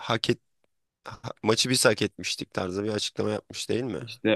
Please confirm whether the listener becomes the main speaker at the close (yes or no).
yes